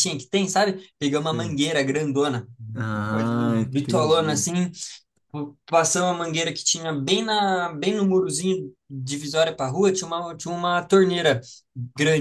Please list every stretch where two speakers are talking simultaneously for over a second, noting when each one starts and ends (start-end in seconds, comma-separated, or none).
3.1-4.5